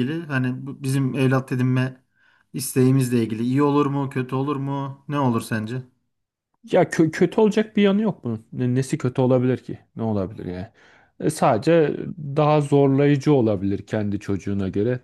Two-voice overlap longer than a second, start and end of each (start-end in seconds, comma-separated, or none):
none